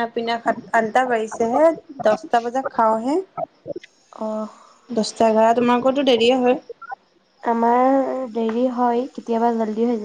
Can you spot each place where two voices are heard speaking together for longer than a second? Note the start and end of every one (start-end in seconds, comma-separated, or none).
none